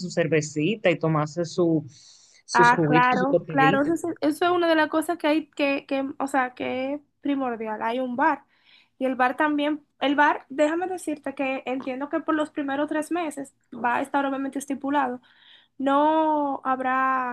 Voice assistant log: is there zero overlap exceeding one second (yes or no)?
no